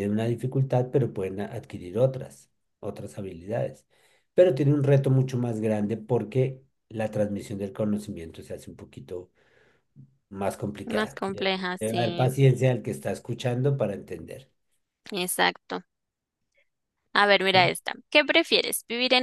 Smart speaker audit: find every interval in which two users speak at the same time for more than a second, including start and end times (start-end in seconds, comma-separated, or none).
10.8-12.3